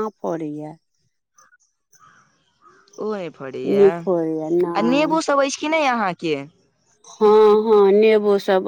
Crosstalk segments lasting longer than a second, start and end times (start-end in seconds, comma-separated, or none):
3.6-5.2